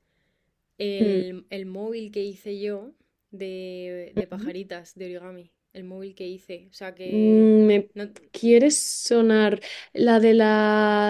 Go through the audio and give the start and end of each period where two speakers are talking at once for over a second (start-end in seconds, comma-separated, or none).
none